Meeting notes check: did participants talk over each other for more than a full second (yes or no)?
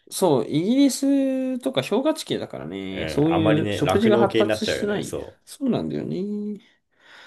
yes